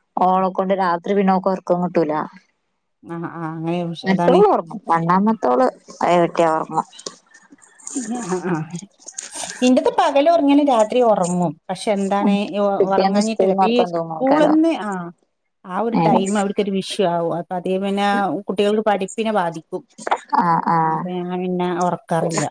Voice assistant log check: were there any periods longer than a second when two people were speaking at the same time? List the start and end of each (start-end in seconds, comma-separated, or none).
12.9-14.6